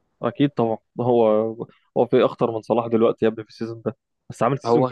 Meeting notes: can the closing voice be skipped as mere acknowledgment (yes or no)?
yes